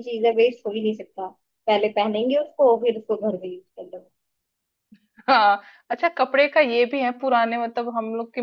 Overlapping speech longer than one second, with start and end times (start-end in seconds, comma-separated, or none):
none